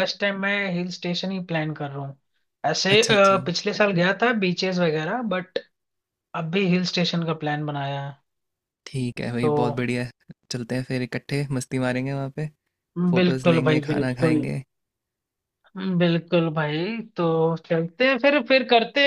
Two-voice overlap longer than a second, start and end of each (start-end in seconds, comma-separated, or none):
13.2-14.4